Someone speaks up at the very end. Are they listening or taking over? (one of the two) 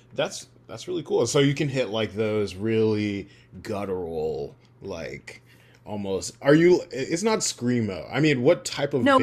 taking over